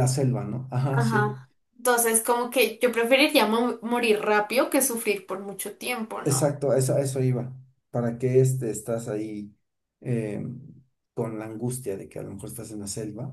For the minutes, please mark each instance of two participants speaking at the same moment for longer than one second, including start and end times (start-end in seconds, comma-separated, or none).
none